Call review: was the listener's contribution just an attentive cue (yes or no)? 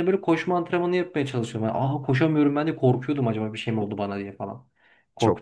no